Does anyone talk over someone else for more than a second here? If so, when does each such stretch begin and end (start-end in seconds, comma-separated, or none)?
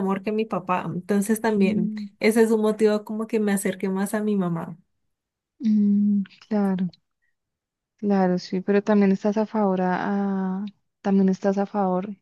none